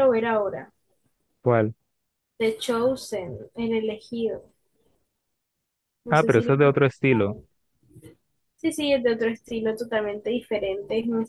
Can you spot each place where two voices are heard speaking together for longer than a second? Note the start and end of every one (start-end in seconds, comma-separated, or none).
6.1-7.4